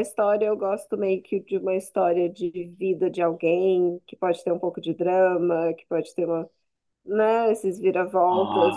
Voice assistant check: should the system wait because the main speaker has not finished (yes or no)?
yes